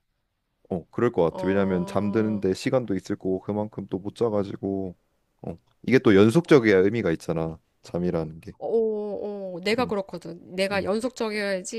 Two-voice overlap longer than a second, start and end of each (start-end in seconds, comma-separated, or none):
1.3-2.5